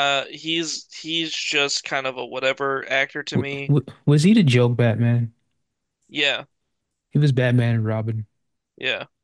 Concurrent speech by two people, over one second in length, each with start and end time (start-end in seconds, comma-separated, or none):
none